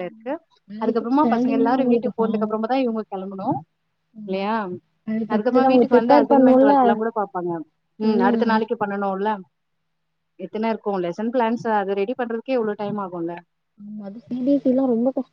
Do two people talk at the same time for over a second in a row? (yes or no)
yes